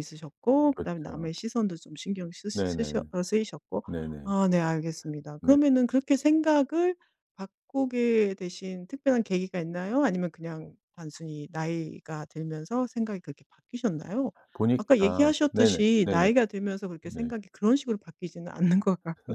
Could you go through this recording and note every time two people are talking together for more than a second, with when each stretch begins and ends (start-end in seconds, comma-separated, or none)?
14.8-16.3